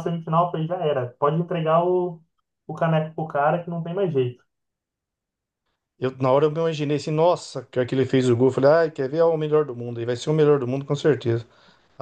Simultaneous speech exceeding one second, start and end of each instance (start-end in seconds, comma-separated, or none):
none